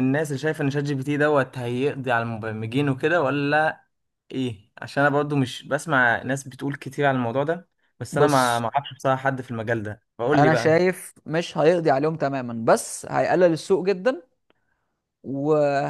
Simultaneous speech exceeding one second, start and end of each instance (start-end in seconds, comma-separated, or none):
none